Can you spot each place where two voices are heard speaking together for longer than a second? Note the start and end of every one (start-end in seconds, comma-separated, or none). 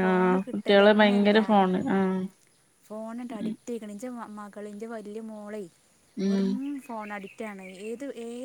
none